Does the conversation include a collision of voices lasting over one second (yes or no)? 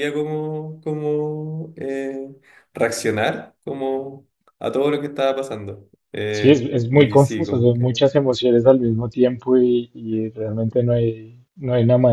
yes